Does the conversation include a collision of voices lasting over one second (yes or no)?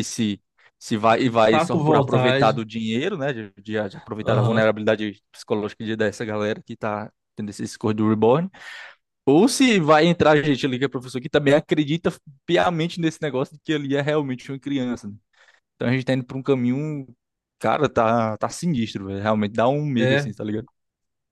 yes